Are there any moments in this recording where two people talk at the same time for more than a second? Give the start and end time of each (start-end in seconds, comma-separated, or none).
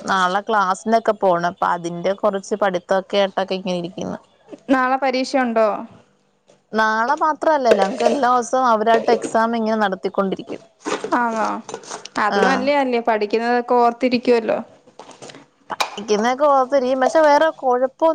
none